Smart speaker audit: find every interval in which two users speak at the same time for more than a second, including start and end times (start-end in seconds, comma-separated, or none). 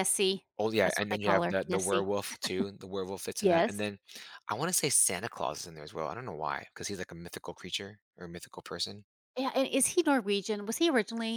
0.8-2.1